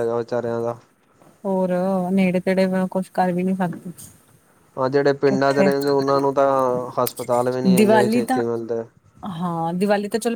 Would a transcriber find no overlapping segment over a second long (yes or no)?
yes